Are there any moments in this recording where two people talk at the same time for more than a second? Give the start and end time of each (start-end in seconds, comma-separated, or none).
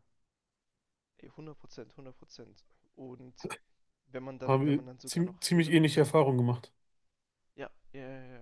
4.5-5.9